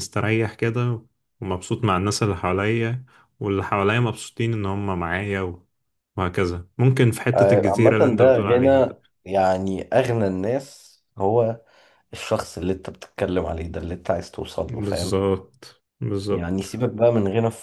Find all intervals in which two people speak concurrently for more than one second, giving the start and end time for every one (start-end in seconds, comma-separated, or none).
7.4-8.9